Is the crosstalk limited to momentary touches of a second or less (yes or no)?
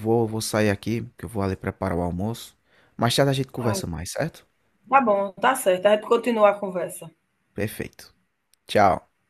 yes